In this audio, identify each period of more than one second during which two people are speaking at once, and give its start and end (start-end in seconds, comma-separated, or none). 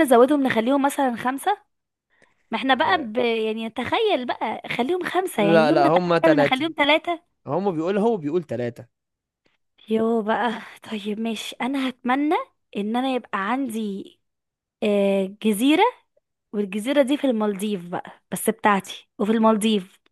5.4-6.7